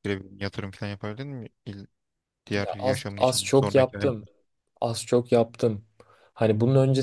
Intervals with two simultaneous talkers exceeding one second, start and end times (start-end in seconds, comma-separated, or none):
2.5-4.2